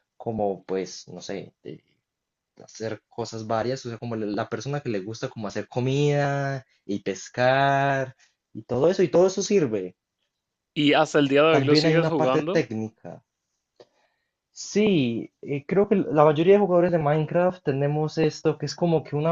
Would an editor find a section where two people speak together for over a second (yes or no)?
yes